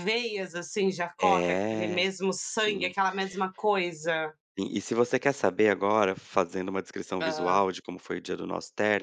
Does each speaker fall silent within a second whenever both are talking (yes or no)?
no